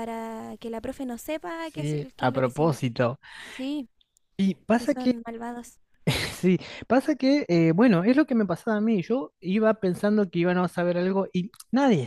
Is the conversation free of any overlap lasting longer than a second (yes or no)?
no